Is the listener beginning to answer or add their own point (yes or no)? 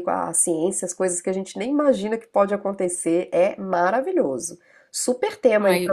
yes